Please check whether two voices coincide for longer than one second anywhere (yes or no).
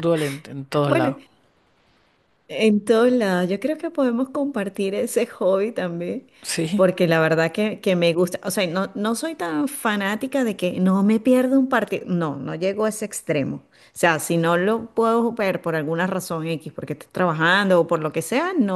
no